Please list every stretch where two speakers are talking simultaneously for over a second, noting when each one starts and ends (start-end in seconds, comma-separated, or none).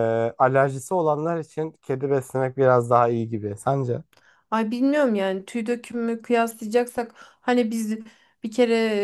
none